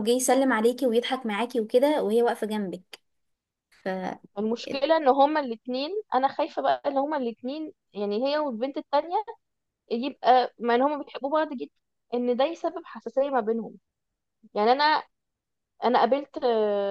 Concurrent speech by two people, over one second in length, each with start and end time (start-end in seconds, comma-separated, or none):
none